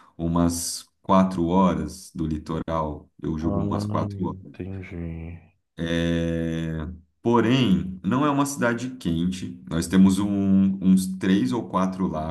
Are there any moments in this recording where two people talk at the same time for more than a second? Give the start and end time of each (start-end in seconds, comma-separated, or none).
3.4-4.6